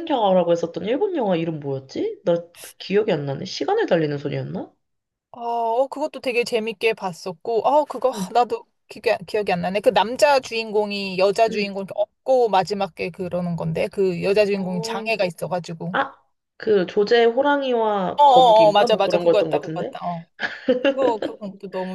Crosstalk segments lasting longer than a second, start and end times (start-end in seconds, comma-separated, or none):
18.2-19.9